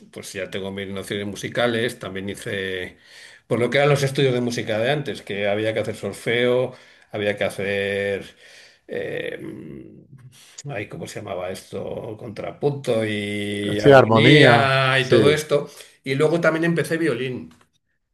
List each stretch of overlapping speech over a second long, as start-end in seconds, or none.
13.8-15.4